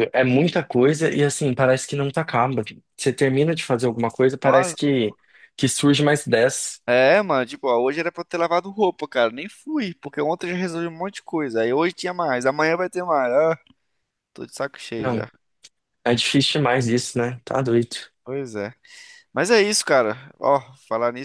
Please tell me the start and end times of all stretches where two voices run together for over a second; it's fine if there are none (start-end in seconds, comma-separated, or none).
none